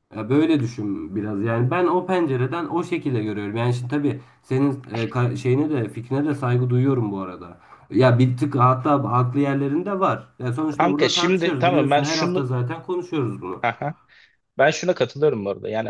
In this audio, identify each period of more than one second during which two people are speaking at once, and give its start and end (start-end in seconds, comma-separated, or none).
10.7-12.5